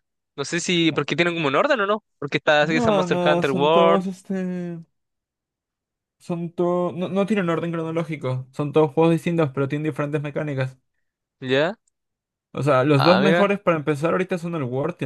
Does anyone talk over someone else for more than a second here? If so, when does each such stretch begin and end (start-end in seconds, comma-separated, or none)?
2.6-4.0